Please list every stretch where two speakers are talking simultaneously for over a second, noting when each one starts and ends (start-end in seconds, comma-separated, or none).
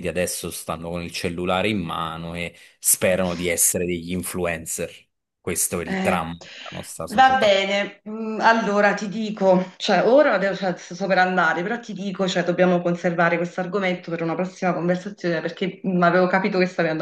none